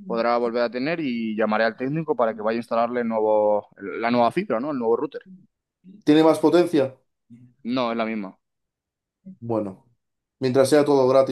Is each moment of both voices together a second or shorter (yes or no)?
yes